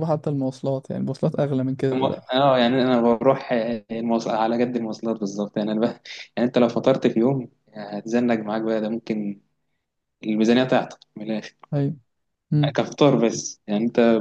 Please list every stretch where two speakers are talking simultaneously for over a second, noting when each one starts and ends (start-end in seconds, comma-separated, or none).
none